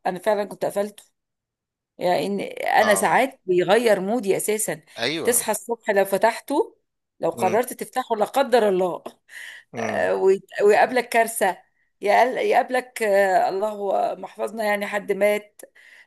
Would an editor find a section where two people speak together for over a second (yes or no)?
no